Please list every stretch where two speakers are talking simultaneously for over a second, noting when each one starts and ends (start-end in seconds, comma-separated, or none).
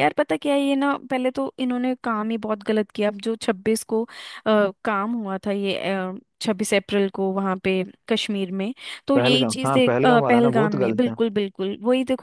9.1-11.2